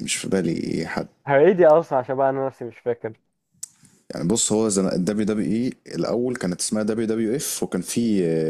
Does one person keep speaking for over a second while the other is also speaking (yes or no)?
no